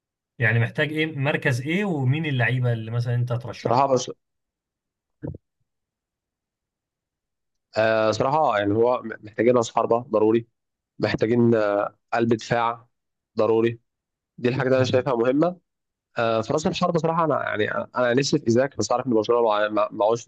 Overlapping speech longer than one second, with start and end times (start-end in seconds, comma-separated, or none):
none